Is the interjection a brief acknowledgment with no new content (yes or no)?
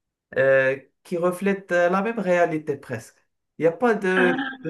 yes